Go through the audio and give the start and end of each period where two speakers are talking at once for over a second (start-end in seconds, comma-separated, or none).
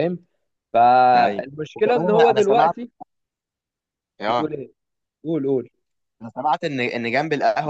1.1-2.7